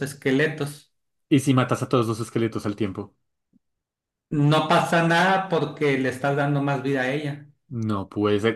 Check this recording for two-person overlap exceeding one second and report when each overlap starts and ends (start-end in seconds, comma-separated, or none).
none